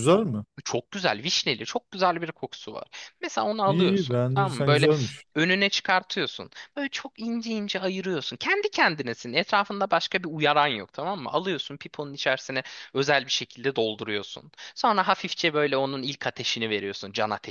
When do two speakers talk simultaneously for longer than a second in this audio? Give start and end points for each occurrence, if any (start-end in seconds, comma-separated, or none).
3.6-4.9